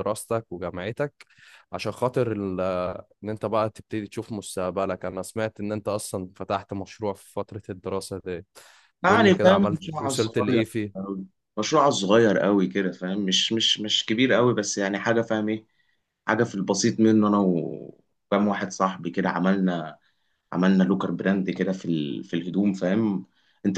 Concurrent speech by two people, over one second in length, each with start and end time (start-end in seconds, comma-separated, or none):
9.1-10.9